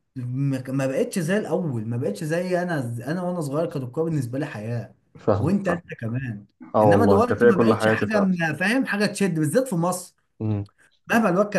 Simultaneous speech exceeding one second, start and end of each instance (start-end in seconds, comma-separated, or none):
6.8-8.3